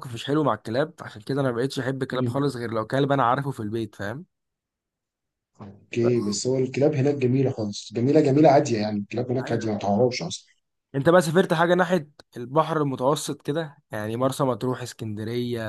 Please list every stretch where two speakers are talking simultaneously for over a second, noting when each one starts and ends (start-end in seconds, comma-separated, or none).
none